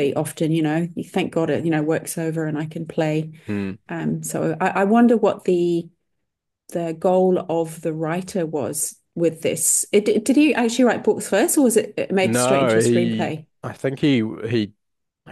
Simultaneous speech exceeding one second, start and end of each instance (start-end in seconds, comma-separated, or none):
12.2-13.4